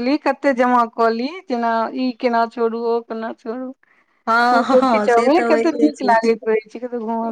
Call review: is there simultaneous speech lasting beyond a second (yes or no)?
yes